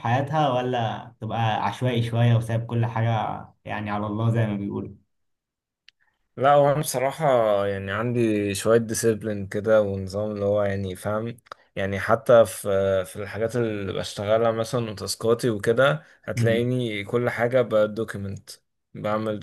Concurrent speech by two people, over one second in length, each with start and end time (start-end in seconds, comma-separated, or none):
none